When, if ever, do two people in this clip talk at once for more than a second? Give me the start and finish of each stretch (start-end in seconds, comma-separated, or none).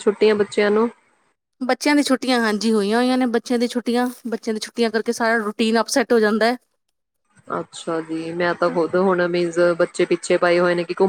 none